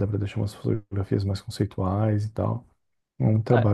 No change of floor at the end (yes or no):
yes